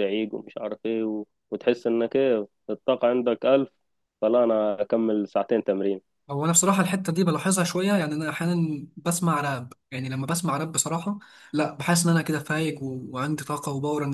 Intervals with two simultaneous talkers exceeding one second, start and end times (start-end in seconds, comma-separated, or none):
none